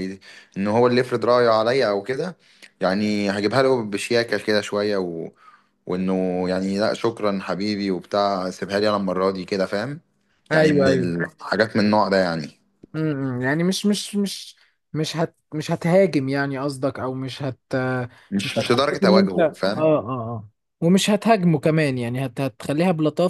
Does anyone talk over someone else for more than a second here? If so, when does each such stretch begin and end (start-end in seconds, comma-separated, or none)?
18.4-20.0